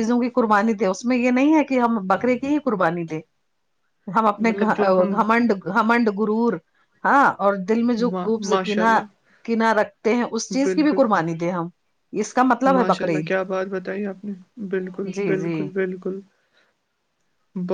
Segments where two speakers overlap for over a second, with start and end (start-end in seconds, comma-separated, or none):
none